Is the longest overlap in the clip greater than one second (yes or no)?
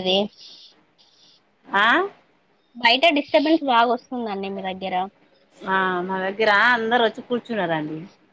no